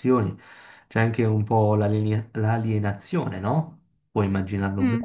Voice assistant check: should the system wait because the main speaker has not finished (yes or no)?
no